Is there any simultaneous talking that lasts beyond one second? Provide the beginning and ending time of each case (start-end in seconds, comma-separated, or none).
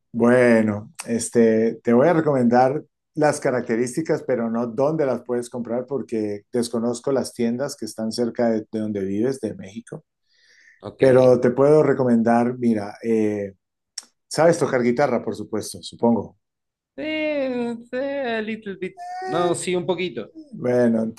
none